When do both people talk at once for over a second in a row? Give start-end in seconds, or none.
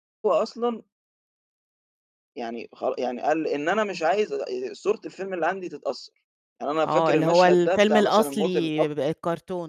6.8-8.9